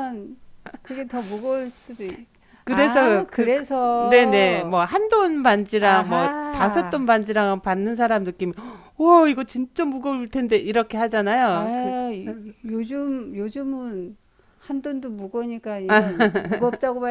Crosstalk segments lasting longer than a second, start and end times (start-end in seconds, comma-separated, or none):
2.7-4.8, 5.8-7.0